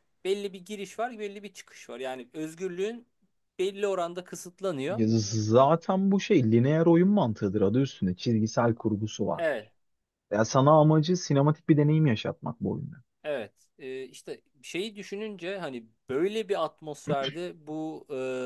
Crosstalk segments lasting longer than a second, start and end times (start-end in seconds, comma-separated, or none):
none